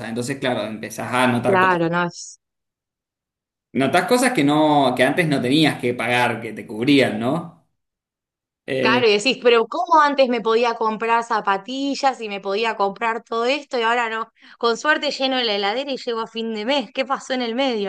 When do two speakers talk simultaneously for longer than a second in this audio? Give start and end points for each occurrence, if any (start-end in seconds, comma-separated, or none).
none